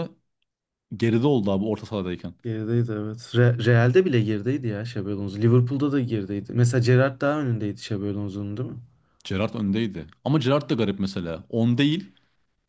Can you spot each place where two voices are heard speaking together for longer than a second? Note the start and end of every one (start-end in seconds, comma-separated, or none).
none